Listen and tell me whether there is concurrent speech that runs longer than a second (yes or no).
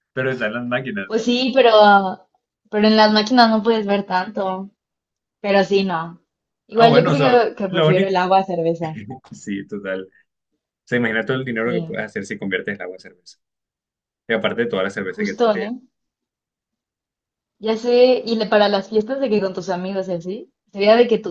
yes